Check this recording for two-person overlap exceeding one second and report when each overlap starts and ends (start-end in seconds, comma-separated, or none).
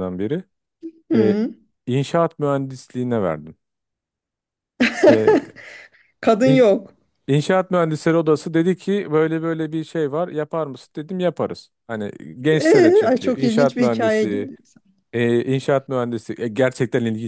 12.5-14.5